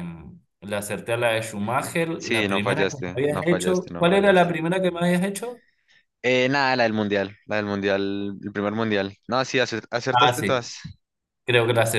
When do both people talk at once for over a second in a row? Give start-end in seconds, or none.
2.1-4.5